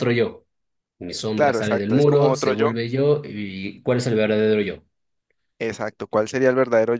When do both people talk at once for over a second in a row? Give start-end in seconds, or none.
1.4-2.7